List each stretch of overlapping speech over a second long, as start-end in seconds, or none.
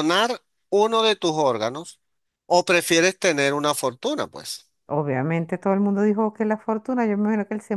none